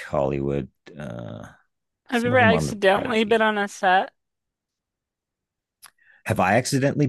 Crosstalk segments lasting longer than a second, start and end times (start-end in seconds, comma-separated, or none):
2.1-3.4